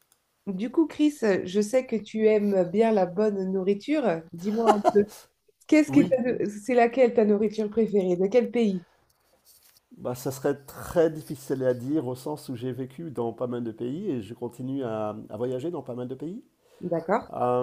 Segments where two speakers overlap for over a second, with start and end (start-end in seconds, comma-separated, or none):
none